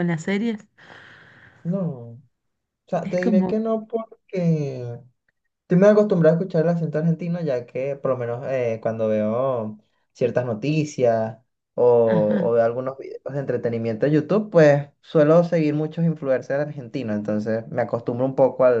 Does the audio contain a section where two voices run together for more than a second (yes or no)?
no